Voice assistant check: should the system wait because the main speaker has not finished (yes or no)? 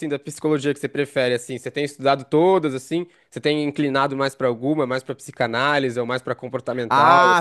no